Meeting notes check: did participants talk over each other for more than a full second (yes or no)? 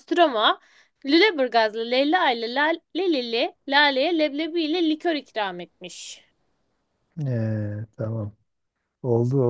no